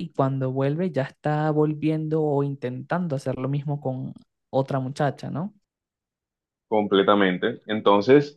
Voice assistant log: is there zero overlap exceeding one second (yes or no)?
yes